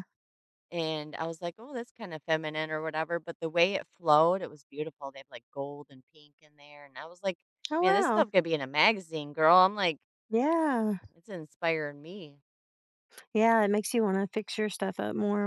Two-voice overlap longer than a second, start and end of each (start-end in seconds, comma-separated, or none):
none